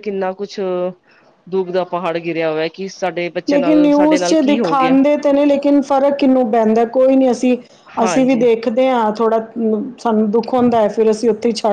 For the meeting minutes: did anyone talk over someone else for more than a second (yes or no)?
yes